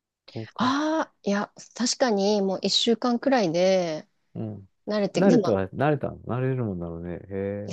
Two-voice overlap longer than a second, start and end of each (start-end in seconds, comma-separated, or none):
none